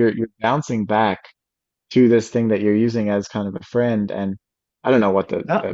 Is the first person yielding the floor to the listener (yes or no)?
no